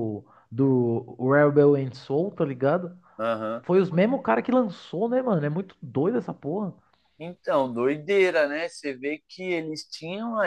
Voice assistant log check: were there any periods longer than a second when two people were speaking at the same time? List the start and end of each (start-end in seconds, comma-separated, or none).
none